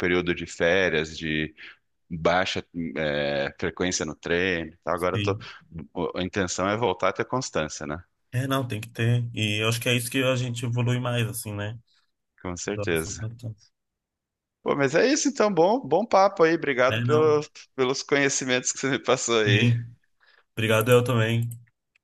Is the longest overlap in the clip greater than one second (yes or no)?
no